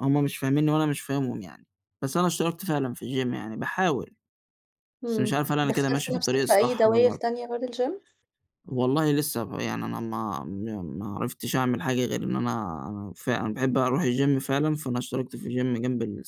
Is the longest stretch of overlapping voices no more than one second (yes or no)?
no